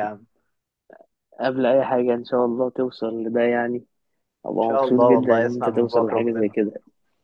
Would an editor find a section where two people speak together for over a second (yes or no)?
yes